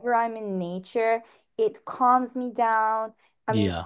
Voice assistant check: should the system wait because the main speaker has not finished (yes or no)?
yes